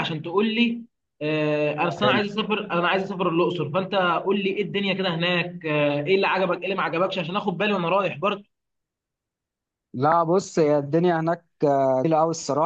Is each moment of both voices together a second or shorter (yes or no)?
yes